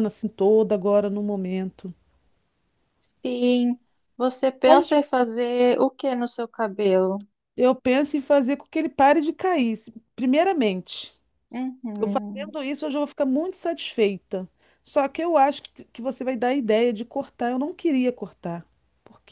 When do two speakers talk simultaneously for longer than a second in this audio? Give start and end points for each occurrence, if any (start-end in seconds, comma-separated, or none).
none